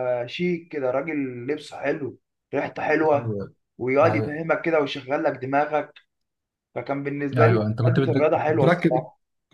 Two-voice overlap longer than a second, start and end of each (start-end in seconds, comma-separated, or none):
7.4-8.9